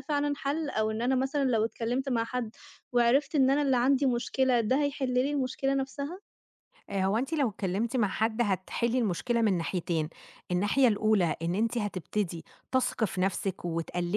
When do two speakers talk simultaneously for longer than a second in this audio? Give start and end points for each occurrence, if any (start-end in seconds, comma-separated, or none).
none